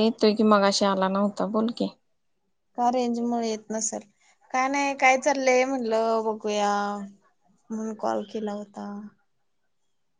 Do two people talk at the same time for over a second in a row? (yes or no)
no